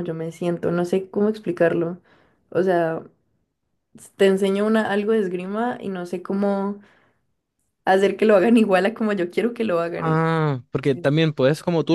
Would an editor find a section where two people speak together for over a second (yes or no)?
no